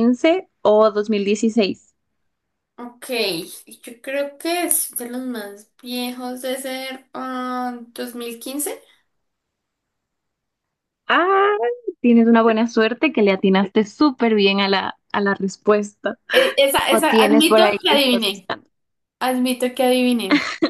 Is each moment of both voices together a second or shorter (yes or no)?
no